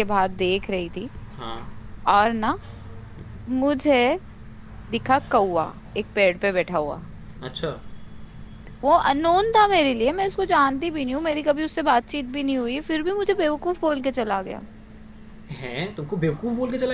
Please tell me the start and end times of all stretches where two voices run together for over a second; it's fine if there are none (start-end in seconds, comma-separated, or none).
none